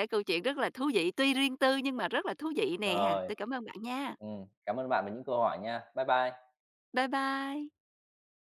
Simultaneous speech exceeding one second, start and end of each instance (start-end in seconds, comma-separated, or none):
none